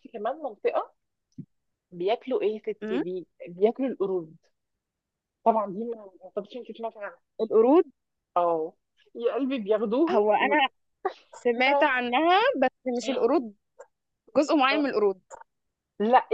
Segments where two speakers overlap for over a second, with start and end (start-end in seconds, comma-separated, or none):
none